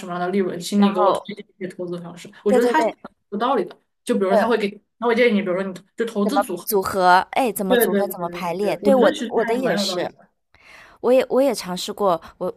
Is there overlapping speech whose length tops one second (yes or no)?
yes